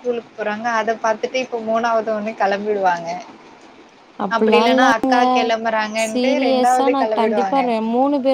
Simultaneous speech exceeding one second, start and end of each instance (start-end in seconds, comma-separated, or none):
6.1-7.6